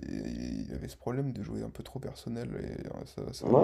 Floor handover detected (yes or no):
yes